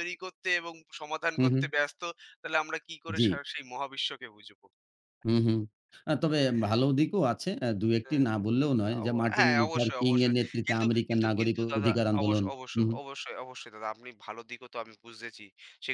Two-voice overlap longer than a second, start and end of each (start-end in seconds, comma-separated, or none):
9.0-12.9